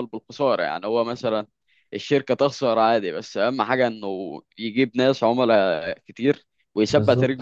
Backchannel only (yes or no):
yes